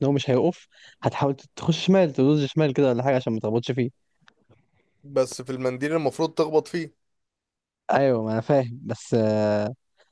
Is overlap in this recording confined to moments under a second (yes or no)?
yes